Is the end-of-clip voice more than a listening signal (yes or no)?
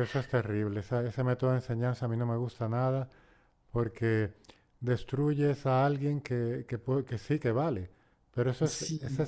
no